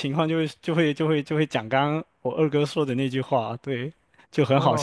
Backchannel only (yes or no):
no